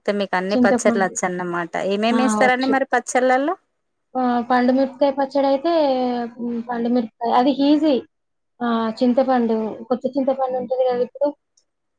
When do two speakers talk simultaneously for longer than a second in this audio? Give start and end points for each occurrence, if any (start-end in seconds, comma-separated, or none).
none